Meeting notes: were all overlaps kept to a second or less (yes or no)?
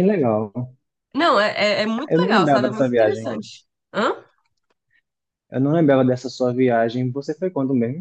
no